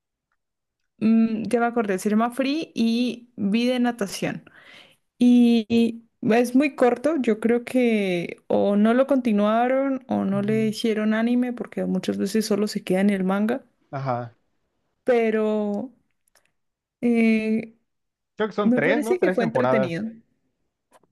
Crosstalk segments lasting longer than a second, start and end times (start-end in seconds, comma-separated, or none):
18.6-19.9